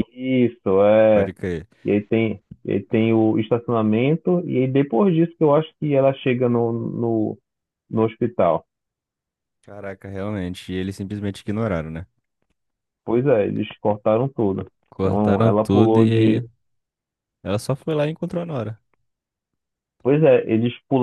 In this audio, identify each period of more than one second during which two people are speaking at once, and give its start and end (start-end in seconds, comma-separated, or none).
14.9-16.4